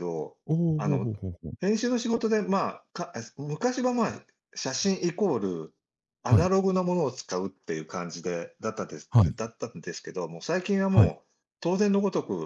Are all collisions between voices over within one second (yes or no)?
yes